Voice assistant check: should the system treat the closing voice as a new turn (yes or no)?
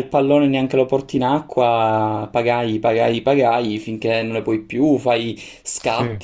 no